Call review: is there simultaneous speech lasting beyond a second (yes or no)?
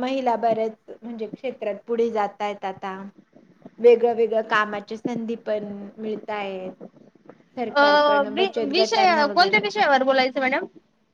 yes